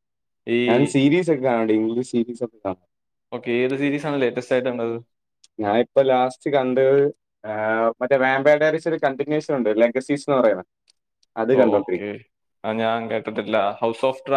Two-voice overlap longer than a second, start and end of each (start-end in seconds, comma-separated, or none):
none